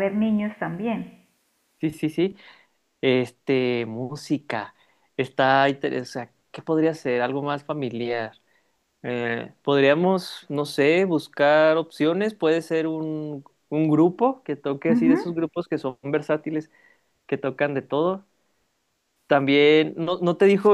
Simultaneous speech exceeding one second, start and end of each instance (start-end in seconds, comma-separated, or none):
none